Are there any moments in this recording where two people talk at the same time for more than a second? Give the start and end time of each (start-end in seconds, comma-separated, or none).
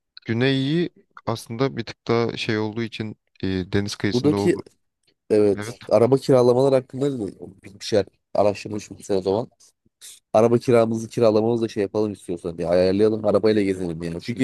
none